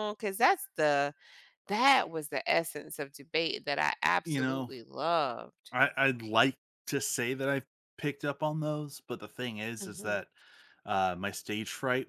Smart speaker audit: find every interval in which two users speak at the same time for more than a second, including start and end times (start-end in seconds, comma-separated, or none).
none